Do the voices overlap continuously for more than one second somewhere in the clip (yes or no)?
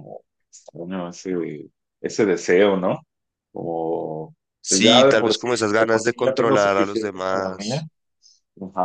yes